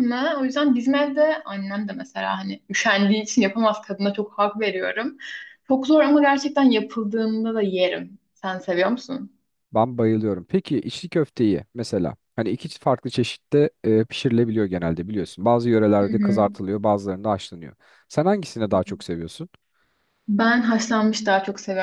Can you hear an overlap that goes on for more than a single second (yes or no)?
no